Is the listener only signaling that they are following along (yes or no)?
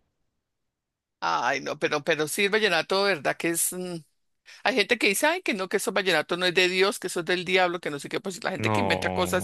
yes